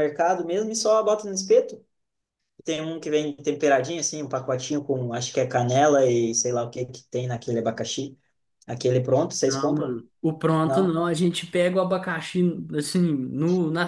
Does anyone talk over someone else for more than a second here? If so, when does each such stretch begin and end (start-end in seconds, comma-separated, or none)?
none